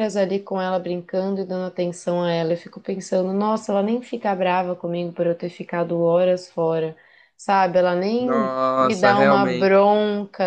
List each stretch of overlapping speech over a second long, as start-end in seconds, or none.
8.2-9.7